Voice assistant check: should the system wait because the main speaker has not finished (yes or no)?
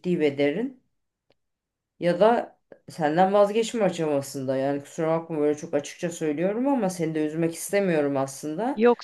no